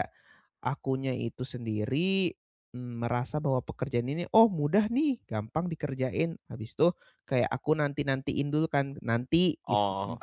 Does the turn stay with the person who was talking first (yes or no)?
yes